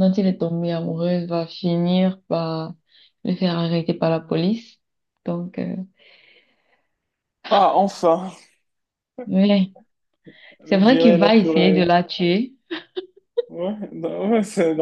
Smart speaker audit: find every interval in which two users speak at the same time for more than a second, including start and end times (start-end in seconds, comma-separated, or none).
10.7-11.9